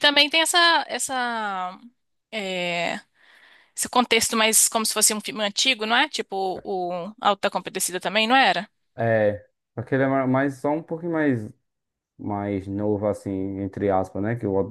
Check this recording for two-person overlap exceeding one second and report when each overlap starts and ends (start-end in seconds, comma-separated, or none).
none